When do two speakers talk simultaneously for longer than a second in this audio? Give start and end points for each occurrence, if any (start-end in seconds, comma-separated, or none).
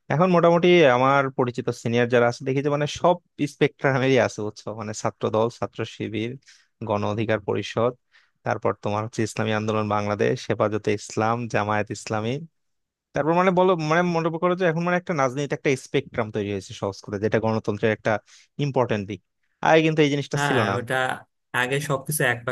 none